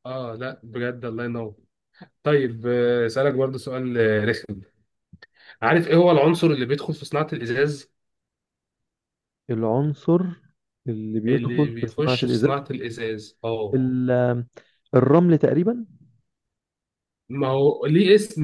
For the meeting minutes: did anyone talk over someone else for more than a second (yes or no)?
yes